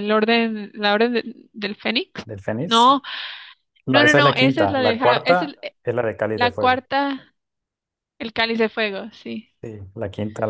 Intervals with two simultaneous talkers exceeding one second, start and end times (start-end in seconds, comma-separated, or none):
3.9-5.6